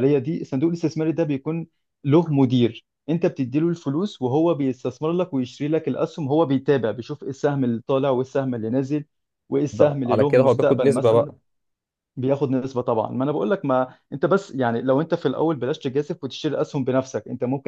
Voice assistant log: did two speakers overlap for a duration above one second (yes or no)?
yes